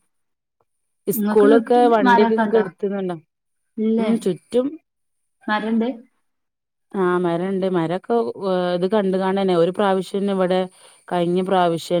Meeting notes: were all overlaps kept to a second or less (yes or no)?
no